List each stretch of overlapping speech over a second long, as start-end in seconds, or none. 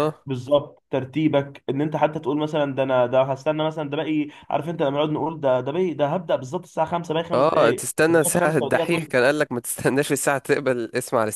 7.3-9.1